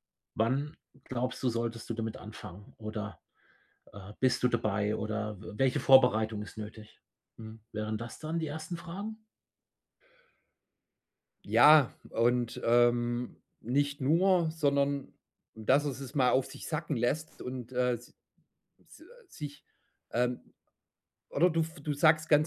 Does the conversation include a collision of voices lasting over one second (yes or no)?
no